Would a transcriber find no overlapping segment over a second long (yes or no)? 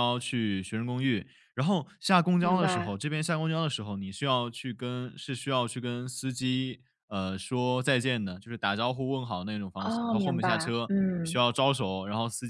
no